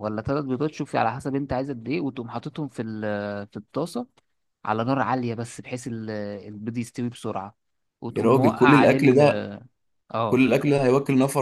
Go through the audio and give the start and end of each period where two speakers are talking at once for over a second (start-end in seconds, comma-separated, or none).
8.1-9.5